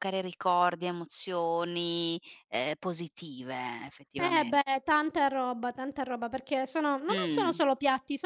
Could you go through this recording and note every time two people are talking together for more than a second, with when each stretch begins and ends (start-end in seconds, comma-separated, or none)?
none